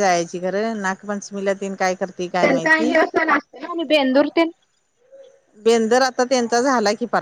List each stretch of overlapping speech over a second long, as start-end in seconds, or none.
none